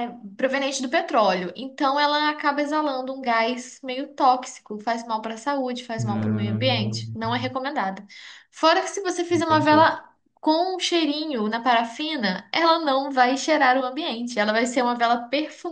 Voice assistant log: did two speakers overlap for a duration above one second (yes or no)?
yes